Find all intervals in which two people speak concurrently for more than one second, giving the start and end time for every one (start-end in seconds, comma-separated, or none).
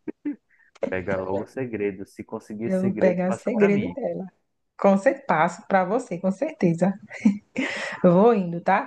2.6-4.0